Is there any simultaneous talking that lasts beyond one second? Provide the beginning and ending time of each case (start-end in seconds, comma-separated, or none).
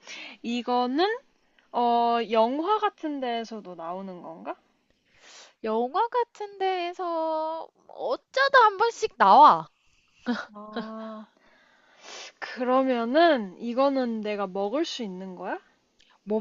none